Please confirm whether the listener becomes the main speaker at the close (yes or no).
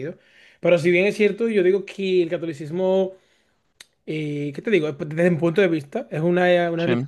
no